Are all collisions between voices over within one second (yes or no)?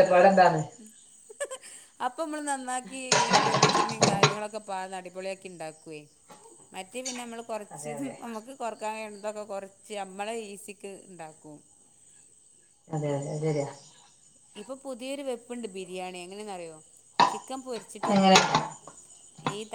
yes